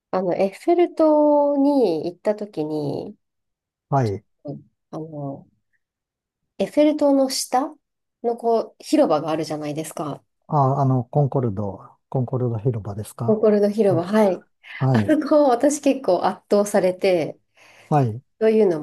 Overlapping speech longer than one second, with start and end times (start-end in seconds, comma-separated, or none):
none